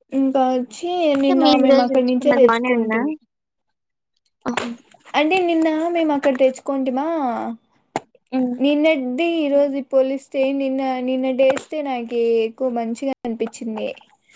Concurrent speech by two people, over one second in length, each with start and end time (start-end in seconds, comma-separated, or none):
1.2-3.0